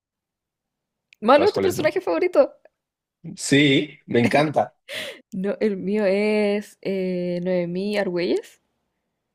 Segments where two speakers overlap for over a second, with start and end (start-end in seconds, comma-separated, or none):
none